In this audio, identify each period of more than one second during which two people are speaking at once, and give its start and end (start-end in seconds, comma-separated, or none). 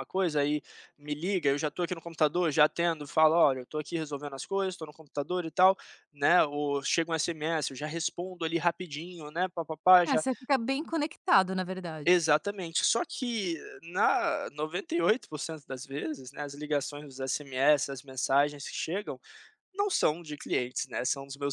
none